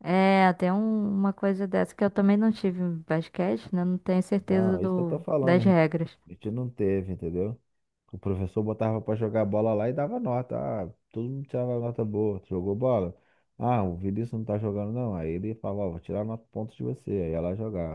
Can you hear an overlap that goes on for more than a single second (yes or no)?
yes